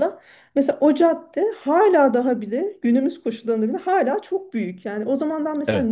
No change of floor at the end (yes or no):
yes